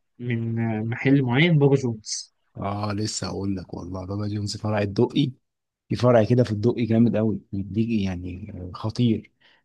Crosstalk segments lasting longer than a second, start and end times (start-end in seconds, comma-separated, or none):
none